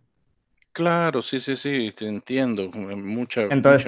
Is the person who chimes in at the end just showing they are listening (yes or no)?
no